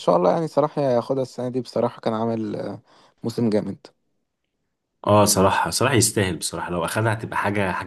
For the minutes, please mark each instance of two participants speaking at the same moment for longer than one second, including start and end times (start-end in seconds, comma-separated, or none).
none